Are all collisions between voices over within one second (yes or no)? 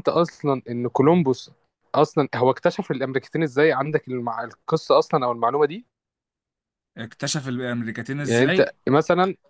yes